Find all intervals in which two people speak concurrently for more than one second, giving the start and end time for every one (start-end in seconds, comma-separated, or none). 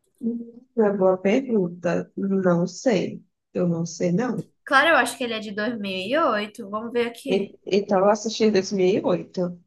none